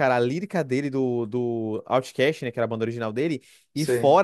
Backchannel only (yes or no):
yes